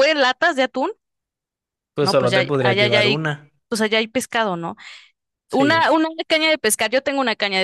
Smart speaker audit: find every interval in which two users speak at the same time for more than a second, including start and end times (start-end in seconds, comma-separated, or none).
2.0-3.2